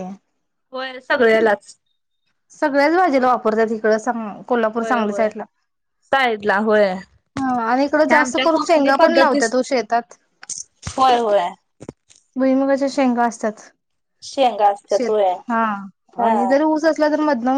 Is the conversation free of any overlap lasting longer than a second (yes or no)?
no